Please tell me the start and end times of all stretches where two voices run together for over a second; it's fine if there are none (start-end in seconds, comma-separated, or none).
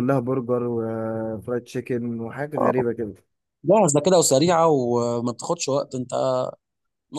none